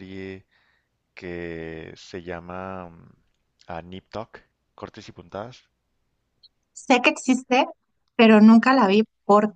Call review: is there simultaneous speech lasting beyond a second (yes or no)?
no